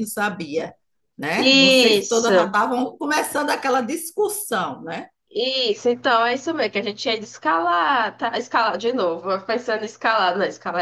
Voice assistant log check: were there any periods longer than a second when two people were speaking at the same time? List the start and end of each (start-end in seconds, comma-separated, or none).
1.4-2.6